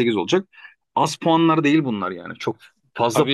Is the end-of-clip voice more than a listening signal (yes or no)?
yes